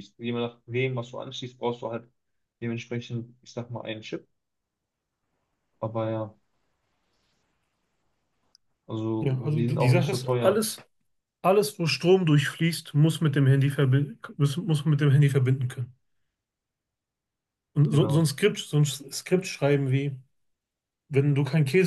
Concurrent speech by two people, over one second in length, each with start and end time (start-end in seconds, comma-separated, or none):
9.2-10.7